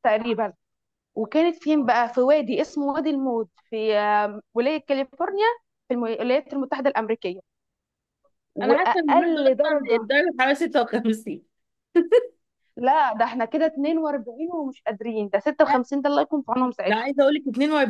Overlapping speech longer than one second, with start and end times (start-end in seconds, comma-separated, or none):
8.7-10.1